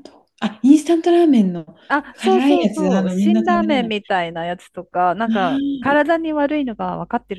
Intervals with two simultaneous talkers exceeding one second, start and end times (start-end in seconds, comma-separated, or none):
2.2-3.9